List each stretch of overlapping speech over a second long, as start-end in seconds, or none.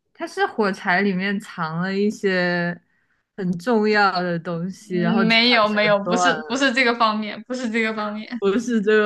4.8-6.7